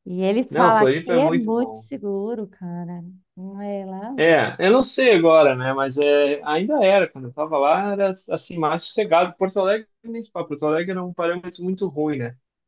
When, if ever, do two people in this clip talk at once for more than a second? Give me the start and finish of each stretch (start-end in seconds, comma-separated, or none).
0.5-1.9